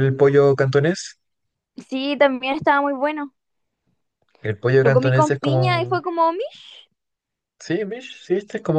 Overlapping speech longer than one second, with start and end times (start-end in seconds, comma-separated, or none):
4.8-6.0